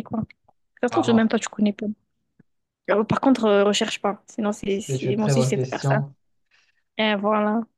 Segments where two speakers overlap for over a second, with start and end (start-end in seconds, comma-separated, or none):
4.7-6.0